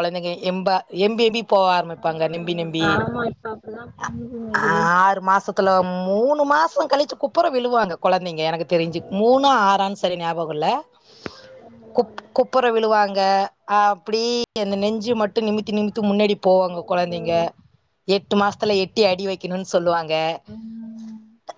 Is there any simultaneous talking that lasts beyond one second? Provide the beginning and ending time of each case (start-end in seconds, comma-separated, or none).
none